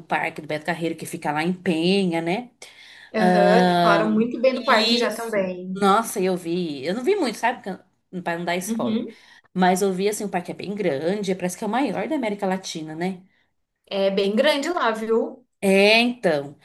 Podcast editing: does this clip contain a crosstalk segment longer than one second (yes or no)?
yes